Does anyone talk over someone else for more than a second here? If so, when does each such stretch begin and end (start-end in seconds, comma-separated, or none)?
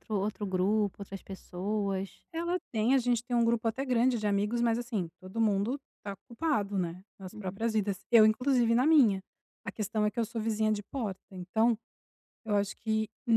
none